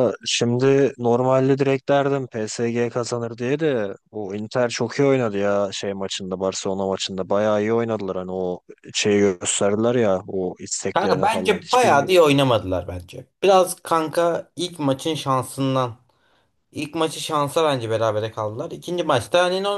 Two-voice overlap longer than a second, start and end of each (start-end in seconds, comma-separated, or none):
10.9-12.2